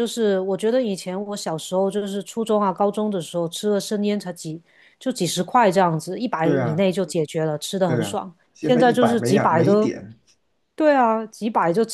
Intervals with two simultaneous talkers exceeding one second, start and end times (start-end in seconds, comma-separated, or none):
7.9-9.9